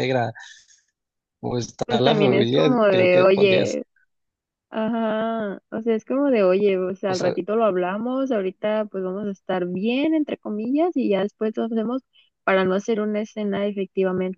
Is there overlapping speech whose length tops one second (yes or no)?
yes